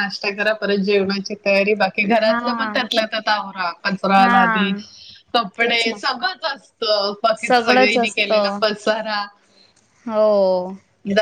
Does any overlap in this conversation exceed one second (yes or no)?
yes